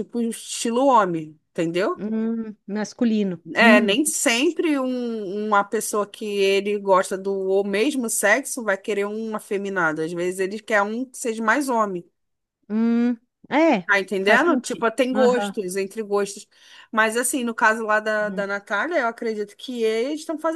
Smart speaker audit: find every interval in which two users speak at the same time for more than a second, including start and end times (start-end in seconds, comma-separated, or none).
13.9-15.6